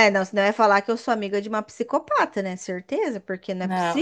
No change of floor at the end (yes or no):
no